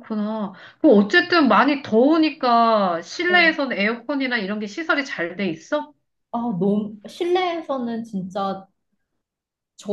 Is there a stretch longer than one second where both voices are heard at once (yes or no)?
no